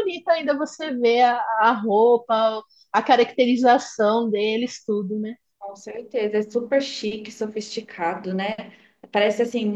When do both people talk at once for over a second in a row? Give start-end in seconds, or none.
none